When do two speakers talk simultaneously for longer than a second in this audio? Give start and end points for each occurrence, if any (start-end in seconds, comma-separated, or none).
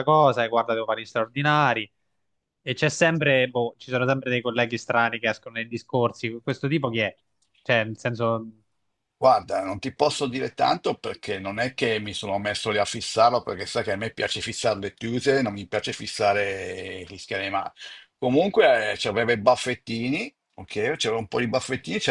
none